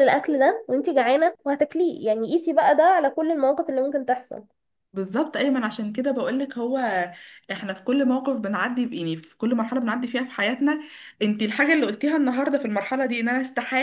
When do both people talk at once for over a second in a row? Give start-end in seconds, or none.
none